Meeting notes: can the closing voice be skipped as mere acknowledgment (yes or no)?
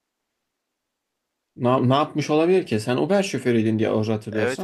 no